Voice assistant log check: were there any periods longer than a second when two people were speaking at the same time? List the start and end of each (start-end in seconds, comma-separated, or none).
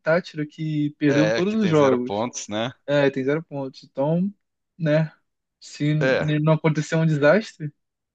1.1-2.3